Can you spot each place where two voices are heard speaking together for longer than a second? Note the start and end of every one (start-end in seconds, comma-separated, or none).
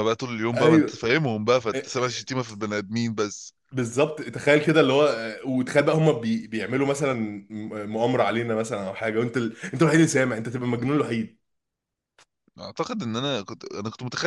none